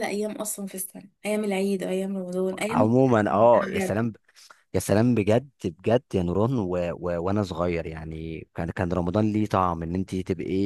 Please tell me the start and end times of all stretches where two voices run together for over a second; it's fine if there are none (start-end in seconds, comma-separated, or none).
none